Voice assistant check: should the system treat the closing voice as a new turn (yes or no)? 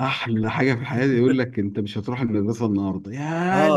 yes